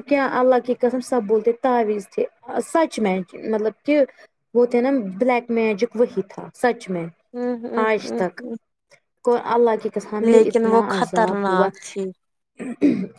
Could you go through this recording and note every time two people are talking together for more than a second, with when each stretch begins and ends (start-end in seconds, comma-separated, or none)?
10.3-11.7